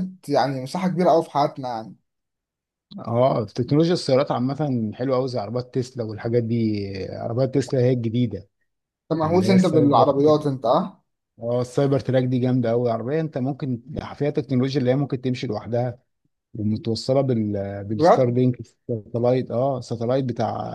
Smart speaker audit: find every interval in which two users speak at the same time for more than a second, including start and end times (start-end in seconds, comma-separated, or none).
9.2-10.4